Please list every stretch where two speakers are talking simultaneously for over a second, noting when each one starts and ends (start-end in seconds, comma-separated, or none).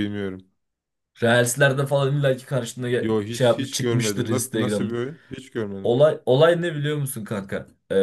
3.0-4.9